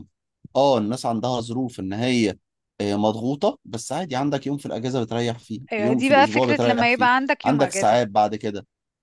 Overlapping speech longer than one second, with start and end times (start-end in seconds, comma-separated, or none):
5.7-8.0